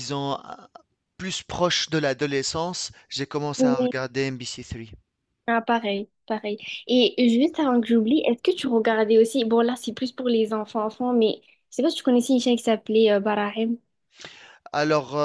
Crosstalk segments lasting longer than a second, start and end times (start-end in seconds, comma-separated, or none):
none